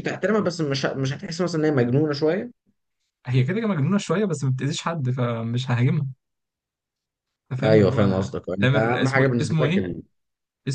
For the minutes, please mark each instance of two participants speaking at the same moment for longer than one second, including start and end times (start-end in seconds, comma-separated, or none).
7.6-9.9